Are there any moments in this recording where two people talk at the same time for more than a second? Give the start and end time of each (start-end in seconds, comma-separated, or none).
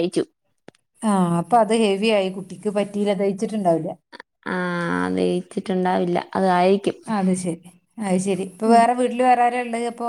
none